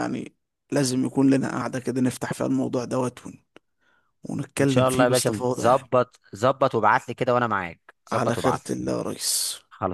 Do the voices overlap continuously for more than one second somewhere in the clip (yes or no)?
yes